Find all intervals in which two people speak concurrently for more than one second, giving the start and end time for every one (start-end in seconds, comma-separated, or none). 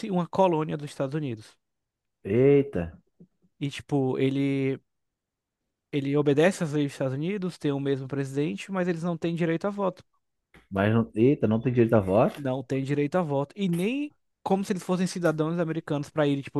none